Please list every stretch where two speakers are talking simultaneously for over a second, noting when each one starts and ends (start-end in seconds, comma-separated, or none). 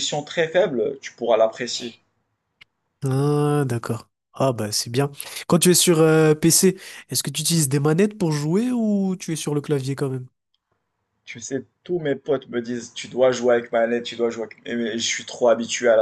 none